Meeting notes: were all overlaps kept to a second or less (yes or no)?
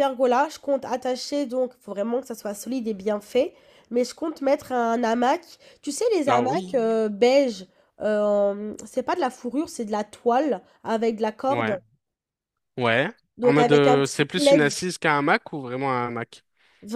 no